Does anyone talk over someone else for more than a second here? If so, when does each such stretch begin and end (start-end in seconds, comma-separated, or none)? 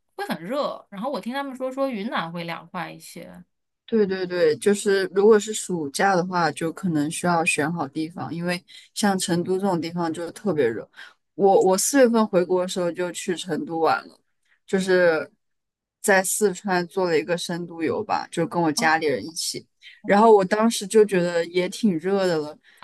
none